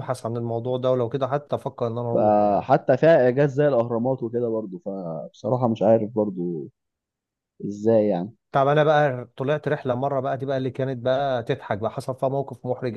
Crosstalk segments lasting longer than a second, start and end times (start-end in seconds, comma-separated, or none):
none